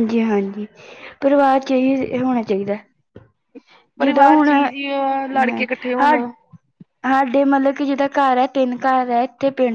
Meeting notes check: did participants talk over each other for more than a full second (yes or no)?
yes